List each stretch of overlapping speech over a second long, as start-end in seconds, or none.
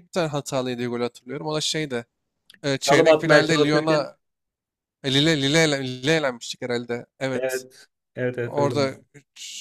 2.9-4.1